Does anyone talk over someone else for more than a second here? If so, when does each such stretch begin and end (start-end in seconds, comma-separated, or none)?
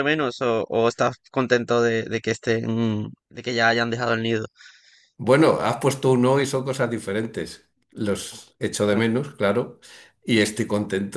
none